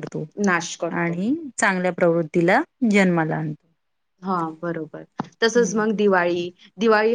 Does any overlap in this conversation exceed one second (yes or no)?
no